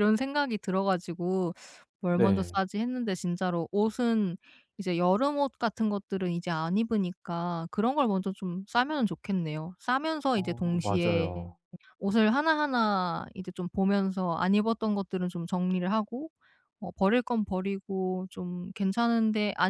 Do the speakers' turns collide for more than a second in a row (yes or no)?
yes